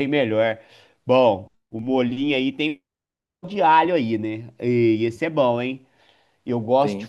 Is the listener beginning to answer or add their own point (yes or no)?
no